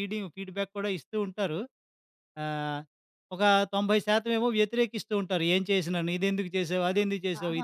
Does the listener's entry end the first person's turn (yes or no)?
yes